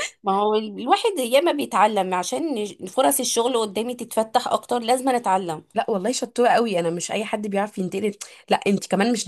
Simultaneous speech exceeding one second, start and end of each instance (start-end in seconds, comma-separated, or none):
none